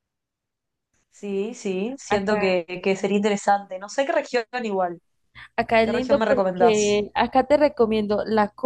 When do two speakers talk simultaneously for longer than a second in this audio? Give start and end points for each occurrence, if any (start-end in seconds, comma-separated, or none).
5.8-7.0